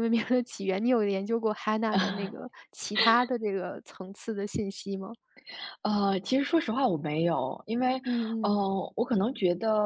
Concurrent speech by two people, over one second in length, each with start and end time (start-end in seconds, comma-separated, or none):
none